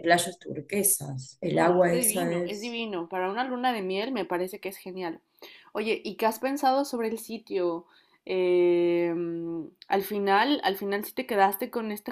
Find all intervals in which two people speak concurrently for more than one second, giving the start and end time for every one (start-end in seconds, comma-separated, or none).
1.5-2.8